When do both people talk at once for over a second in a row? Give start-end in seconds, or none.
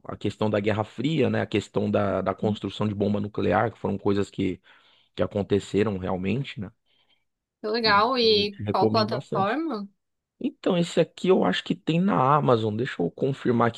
7.8-9.6